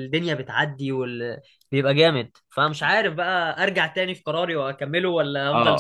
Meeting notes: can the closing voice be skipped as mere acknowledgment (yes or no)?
no